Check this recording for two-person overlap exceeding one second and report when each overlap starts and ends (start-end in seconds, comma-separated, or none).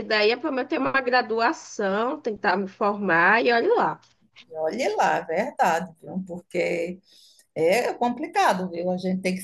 none